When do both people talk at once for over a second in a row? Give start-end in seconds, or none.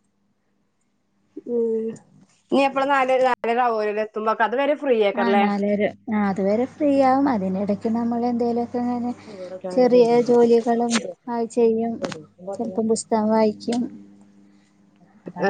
none